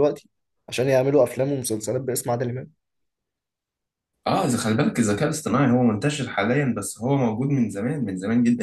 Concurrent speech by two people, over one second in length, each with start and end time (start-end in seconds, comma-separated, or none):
none